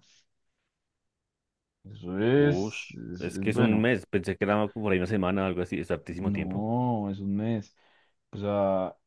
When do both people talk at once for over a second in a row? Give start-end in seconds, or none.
2.3-3.9